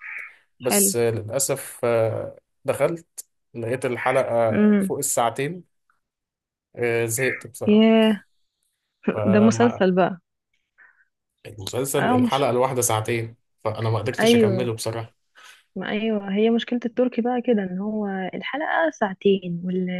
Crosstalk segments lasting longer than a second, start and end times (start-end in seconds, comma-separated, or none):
none